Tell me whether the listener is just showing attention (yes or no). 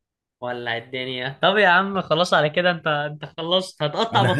no